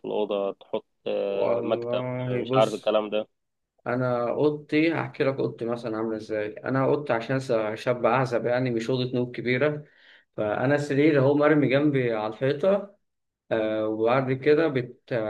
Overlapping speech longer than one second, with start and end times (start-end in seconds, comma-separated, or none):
1.3-3.0